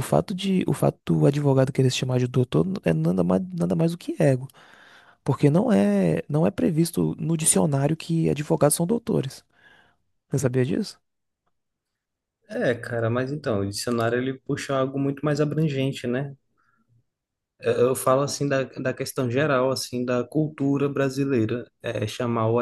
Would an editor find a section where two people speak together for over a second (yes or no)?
no